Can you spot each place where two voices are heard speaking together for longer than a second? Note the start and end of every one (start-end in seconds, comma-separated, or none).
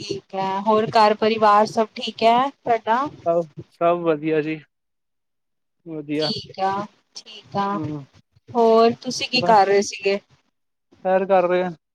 none